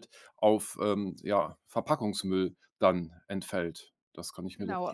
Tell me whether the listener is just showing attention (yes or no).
no